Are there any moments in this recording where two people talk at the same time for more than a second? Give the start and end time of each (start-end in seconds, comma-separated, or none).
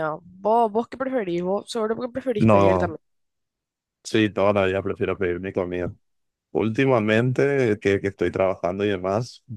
none